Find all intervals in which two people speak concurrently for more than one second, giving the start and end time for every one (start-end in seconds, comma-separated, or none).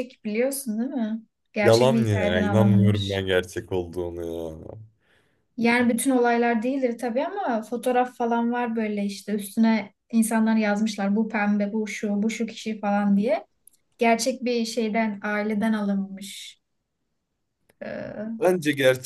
1.6-3.2